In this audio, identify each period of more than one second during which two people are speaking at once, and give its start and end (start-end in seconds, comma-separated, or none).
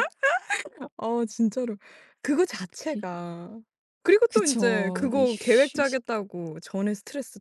4.3-6.0